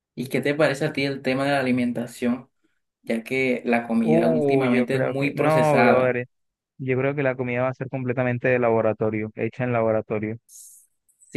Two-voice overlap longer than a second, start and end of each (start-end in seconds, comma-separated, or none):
4.0-6.2